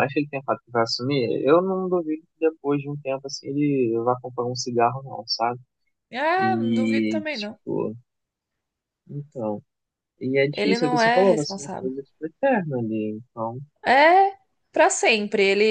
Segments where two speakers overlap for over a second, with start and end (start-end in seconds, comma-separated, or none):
6.4-7.6, 10.5-11.9